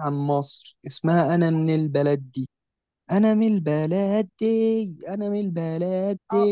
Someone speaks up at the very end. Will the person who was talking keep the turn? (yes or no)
no